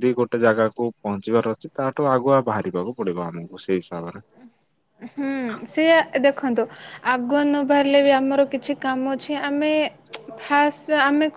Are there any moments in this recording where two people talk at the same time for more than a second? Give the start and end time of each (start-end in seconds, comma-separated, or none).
none